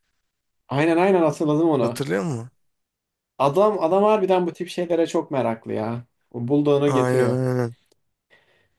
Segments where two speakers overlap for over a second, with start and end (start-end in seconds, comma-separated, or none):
none